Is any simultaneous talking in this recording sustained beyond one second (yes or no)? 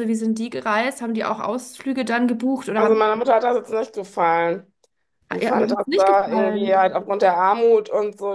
yes